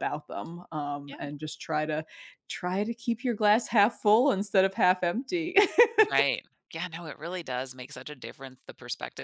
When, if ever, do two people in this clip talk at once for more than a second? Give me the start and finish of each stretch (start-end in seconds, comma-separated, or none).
none